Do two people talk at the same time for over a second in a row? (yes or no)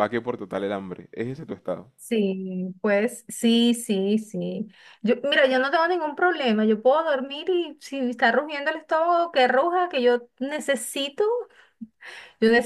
no